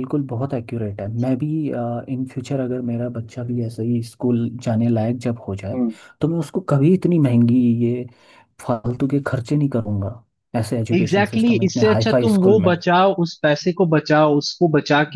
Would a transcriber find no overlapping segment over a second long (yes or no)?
no